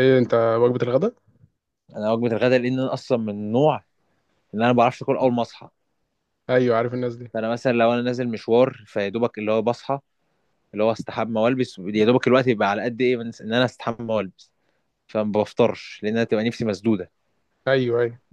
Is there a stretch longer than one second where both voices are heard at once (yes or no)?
no